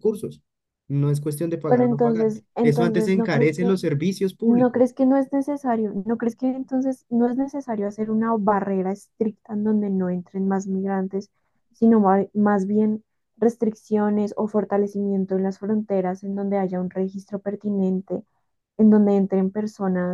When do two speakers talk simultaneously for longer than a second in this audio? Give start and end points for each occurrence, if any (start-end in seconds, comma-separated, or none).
1.7-3.8